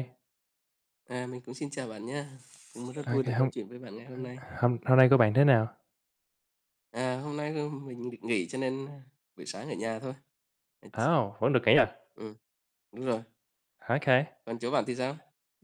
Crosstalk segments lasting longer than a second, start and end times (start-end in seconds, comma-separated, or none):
none